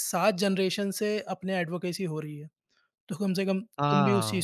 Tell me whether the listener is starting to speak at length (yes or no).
yes